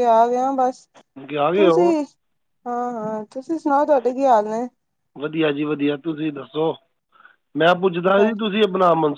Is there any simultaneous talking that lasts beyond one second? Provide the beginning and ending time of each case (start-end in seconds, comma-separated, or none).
none